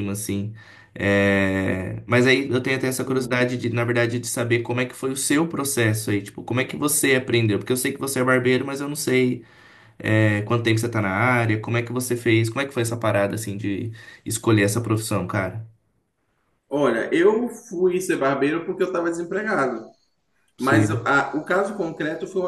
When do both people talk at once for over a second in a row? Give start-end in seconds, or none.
none